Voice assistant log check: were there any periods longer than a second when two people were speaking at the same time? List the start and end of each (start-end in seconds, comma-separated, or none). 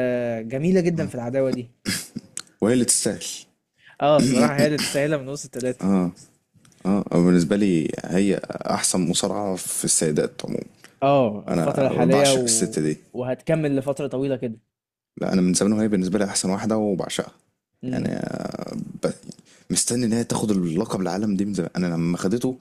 11.5-12.7